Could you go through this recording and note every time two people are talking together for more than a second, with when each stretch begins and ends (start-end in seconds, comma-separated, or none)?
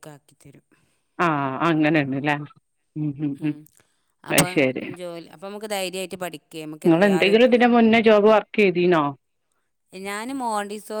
none